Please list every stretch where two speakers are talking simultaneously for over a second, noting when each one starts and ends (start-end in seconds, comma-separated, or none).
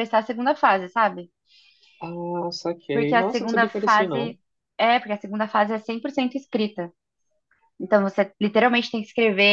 2.9-4.4